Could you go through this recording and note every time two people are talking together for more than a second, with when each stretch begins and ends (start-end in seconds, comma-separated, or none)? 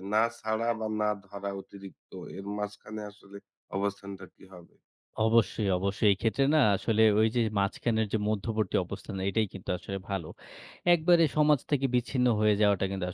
none